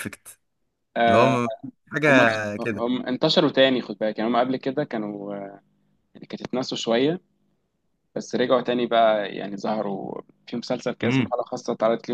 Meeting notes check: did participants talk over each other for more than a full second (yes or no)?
no